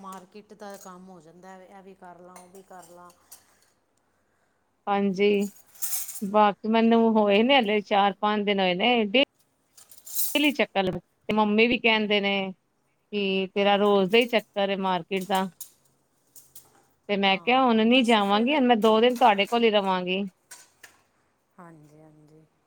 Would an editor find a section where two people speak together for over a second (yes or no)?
yes